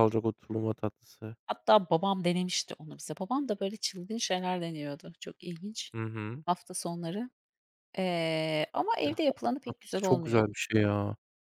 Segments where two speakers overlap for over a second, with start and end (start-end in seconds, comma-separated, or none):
9.0-10.5